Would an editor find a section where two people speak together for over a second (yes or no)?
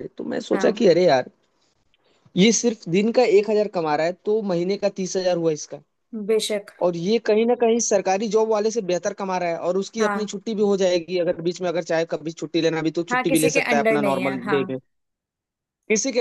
yes